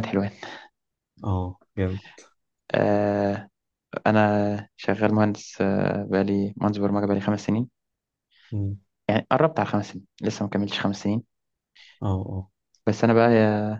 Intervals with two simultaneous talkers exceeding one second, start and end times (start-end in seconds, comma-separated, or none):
none